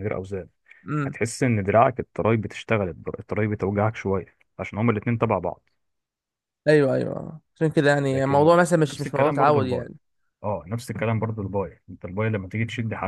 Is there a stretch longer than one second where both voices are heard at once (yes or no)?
yes